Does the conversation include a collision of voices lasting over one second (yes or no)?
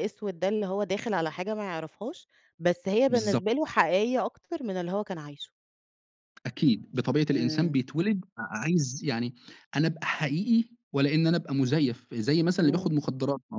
no